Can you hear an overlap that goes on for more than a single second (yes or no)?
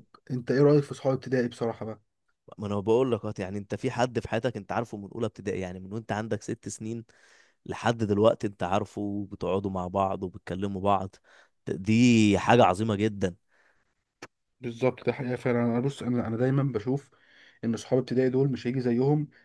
no